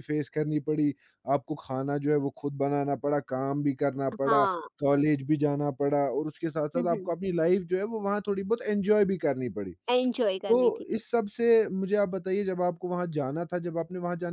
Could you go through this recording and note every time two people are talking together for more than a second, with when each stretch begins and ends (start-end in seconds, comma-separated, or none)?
none